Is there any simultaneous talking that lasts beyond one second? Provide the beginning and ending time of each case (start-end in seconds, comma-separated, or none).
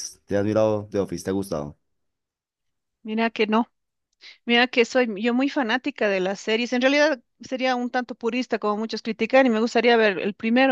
none